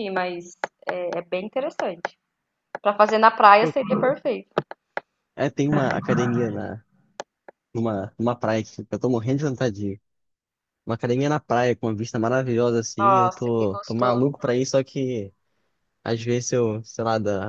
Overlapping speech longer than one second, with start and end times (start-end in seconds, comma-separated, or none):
13.0-14.2